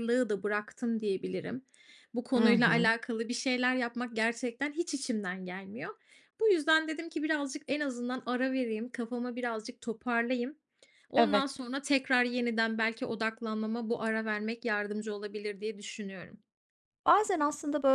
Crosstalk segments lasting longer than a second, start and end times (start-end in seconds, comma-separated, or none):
none